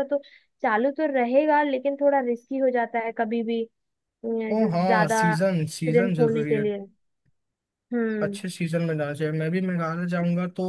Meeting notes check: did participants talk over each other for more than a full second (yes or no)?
yes